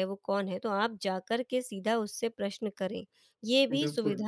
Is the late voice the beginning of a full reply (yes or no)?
no